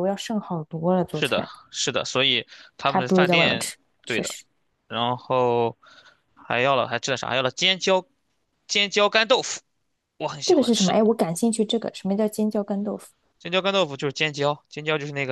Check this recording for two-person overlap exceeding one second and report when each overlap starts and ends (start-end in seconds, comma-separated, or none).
2.9-4.3